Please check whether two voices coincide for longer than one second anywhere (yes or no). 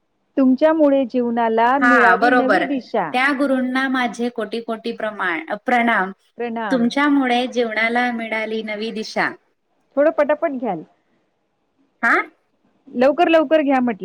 no